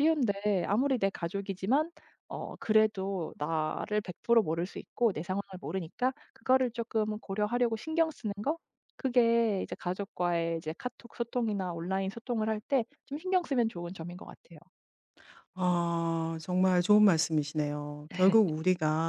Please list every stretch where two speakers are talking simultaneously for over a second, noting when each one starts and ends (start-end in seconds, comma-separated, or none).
none